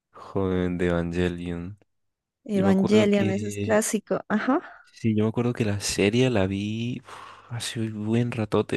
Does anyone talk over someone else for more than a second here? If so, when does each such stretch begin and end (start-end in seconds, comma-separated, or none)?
2.5-3.8